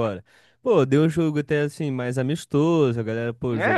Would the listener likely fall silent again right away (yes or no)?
no